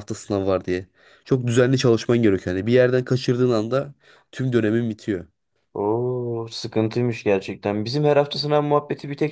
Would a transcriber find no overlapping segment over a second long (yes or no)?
yes